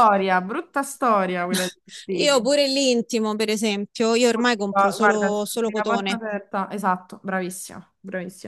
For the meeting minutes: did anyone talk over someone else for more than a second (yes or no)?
yes